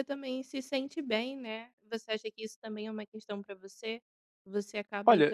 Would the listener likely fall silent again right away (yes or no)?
yes